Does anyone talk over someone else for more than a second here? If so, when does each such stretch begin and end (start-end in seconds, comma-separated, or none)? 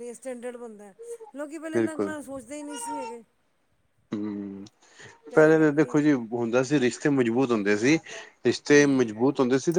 none